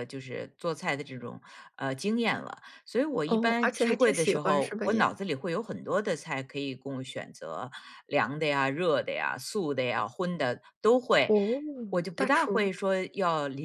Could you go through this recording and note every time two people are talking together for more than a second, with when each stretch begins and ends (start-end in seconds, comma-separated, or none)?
3.3-5.1